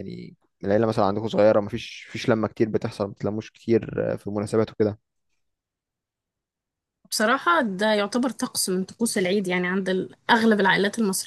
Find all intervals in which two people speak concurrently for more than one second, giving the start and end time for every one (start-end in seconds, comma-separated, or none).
none